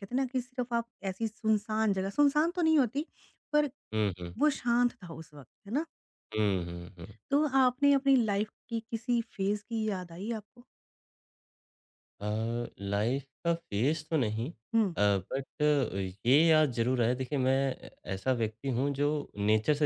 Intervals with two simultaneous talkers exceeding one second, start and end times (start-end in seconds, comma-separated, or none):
none